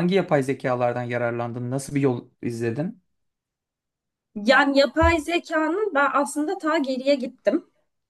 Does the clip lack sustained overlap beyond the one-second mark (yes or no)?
yes